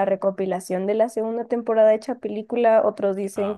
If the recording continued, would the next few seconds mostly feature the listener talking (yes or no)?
no